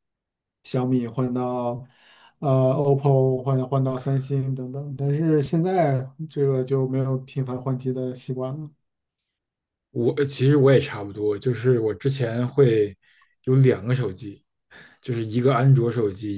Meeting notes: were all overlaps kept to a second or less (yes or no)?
yes